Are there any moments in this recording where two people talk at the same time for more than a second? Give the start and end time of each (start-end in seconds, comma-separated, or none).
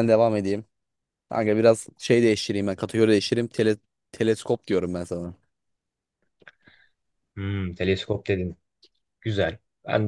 none